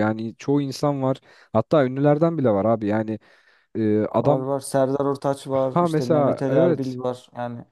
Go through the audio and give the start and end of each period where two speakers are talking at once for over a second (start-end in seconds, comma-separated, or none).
5.5-7.0